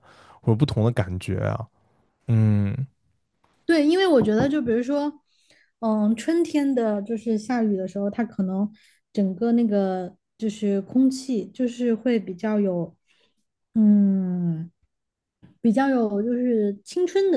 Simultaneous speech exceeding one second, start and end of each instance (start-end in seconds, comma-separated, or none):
none